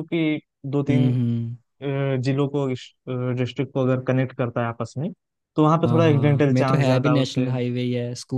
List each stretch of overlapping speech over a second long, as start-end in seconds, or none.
5.9-7.5